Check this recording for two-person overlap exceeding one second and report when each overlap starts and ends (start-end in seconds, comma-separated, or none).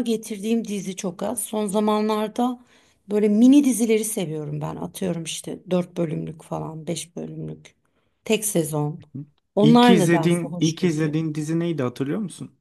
9.6-11.1